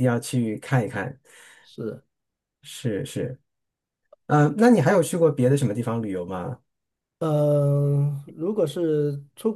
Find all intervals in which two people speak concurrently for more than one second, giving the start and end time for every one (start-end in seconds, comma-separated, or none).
none